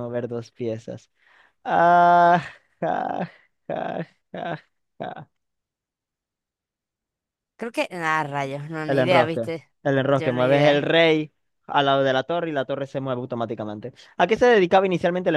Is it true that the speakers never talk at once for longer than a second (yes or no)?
no